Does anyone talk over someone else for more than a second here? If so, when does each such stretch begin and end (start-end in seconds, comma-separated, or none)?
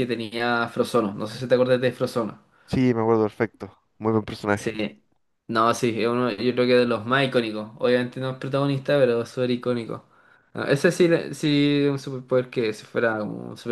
none